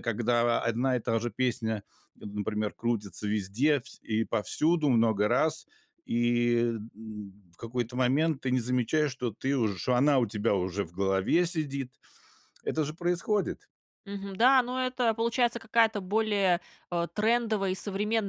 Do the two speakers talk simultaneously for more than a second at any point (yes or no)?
no